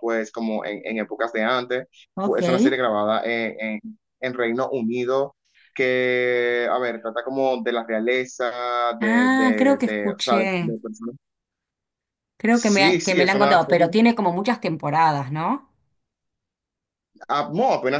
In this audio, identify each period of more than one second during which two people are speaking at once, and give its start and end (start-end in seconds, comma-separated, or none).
9.0-10.7, 12.5-13.9